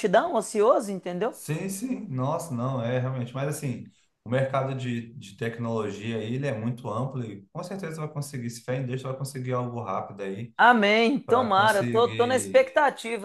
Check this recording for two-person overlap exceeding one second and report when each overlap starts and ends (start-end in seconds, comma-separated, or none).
11.2-12.7